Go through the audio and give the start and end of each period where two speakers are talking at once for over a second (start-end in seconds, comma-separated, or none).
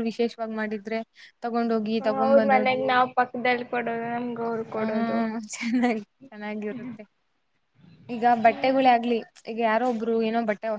none